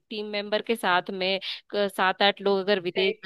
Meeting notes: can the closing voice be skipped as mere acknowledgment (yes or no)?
yes